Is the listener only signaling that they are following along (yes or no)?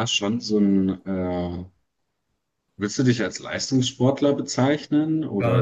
no